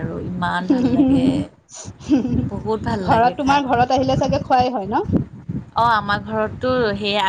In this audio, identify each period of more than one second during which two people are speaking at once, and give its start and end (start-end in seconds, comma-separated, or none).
none